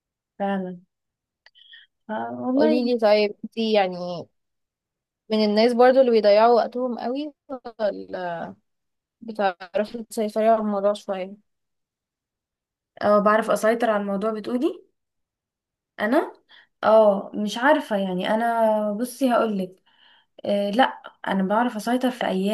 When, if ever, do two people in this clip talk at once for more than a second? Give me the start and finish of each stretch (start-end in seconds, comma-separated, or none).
none